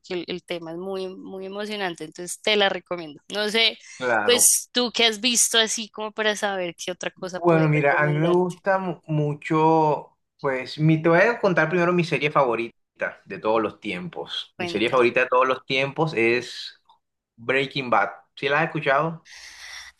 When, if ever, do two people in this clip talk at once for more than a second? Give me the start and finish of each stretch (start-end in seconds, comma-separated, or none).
7.3-8.6